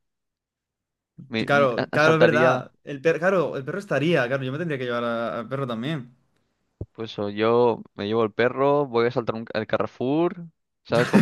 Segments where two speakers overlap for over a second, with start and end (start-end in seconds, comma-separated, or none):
1.4-2.7